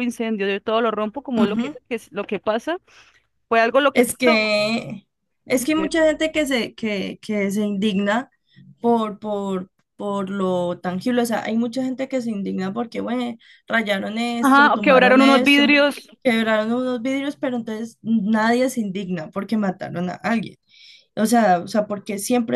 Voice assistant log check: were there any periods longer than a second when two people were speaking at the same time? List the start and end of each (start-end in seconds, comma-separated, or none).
14.4-15.8